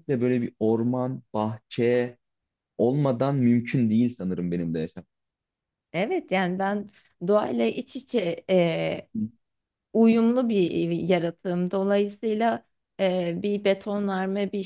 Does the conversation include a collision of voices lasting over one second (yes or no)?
no